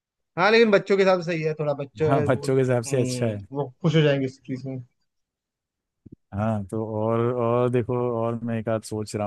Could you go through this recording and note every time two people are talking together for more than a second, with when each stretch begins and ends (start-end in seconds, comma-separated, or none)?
2.1-3.4